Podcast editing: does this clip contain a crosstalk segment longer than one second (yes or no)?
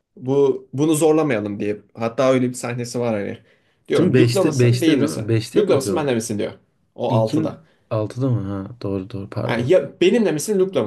yes